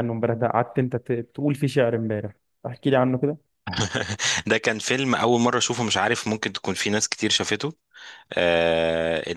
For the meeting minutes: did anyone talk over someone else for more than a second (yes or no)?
no